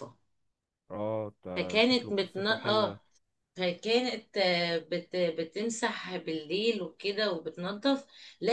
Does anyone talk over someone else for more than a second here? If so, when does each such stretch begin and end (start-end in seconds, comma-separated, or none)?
1.6-3.0